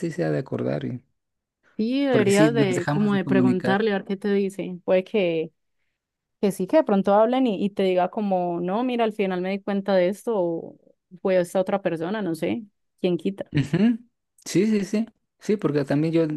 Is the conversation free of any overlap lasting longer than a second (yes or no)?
no